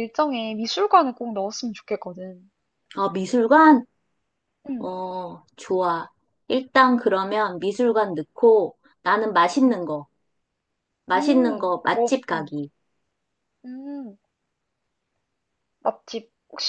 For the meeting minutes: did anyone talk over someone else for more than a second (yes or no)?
yes